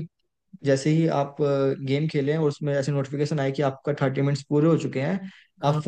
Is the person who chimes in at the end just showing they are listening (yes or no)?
yes